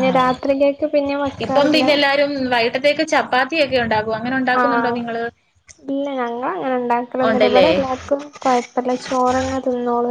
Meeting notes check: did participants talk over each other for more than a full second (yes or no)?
no